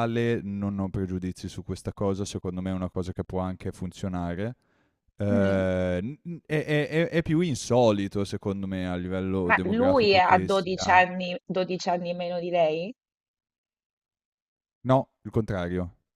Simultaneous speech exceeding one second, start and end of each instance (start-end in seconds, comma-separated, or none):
9.5-11.0